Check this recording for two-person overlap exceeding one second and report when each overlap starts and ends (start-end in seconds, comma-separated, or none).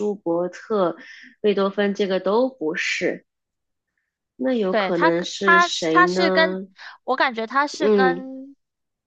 4.7-6.6